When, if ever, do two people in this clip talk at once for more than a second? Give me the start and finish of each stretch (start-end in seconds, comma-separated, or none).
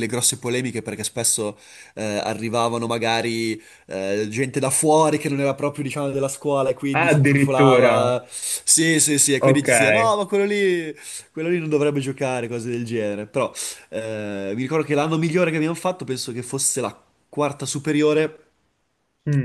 6.9-8.2